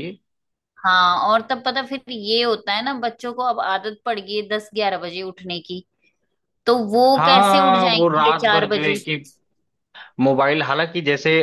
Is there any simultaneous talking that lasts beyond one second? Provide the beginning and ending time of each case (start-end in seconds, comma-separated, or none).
7.2-8.9